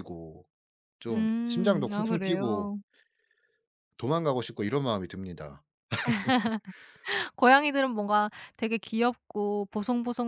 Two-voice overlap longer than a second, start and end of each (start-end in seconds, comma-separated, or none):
1.1-2.7